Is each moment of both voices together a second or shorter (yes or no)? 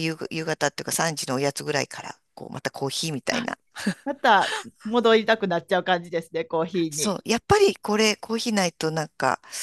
yes